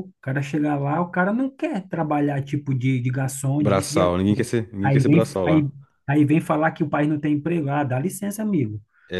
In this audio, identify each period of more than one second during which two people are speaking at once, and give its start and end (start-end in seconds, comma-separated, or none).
3.6-5.7